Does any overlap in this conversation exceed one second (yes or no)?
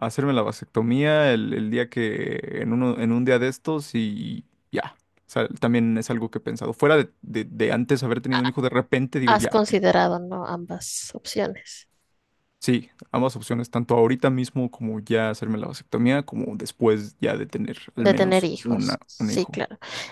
yes